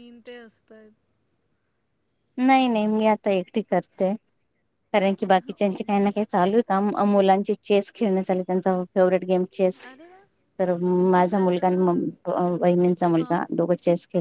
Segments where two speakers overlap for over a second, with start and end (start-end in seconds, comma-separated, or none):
none